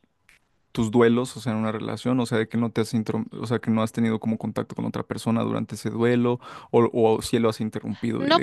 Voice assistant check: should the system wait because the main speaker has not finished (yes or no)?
no